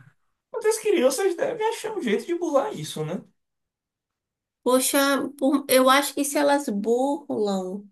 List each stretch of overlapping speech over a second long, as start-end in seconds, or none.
none